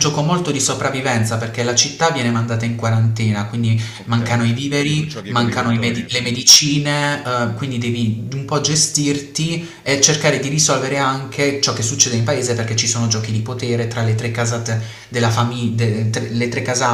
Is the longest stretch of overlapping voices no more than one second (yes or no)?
no